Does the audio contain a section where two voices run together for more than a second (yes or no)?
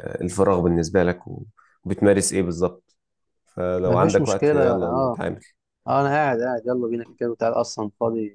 yes